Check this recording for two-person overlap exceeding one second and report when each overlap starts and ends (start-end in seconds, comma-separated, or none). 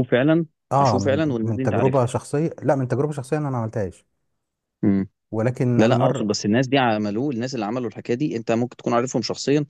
0.7-2.1